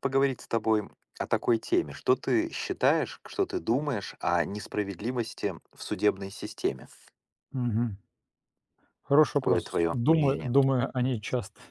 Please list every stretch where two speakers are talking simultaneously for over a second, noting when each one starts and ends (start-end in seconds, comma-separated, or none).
9.3-10.5